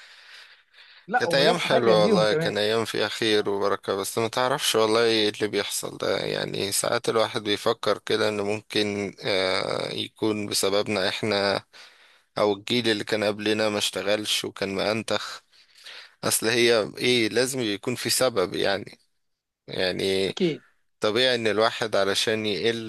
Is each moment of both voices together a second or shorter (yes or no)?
no